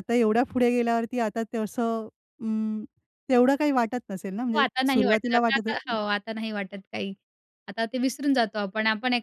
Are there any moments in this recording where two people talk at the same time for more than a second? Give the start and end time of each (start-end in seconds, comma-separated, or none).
4.5-5.9